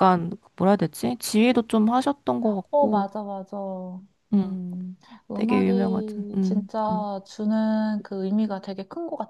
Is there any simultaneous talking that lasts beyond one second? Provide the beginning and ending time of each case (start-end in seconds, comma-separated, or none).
5.3-7.1